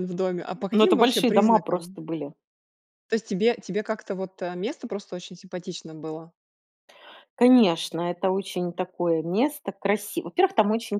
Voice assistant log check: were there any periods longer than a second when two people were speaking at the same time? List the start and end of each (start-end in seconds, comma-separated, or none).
0.7-2.0